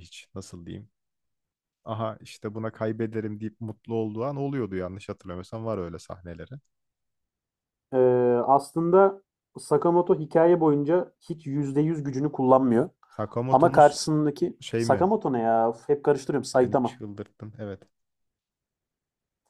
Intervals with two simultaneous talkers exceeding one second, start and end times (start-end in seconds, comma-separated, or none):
none